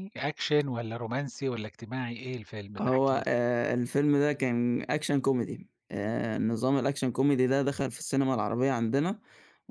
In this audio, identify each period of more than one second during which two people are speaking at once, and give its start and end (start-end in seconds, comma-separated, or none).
none